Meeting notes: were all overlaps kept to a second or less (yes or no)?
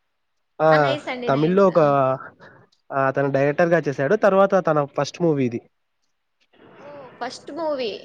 yes